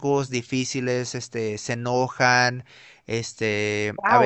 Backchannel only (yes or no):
no